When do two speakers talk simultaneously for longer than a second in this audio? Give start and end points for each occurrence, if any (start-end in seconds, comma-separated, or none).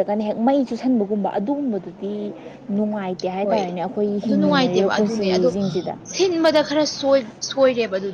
none